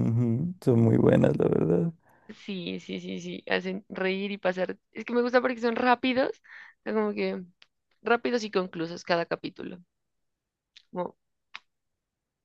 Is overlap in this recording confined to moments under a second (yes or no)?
yes